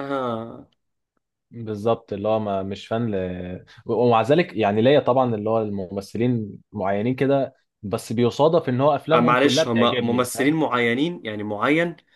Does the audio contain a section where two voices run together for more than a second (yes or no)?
yes